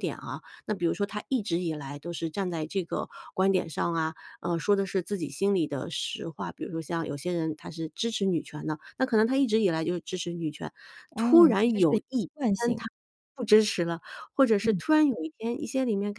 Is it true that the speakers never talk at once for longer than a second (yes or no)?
no